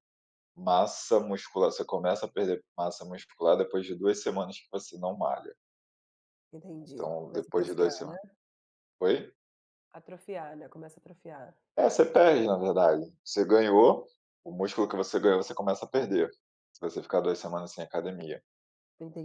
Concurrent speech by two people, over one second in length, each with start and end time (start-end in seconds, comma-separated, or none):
6.8-8.2